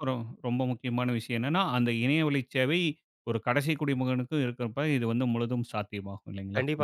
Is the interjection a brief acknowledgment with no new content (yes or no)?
no